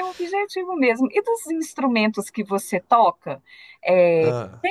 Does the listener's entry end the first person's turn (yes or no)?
no